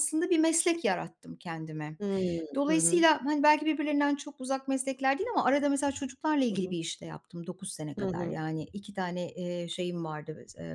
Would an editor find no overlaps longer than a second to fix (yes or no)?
yes